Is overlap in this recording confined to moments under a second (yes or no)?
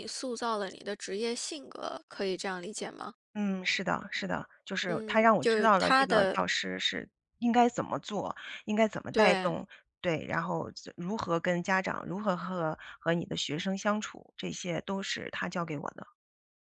no